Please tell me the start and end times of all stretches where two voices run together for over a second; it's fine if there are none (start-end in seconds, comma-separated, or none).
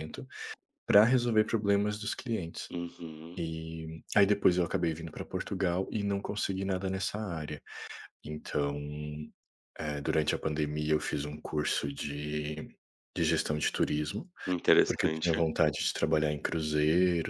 none